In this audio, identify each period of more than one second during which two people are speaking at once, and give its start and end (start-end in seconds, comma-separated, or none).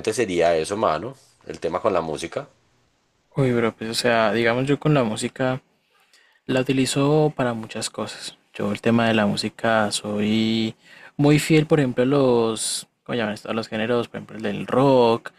none